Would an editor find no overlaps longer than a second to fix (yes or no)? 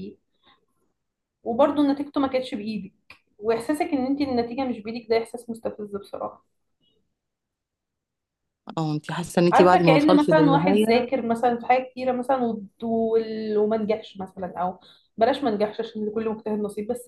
no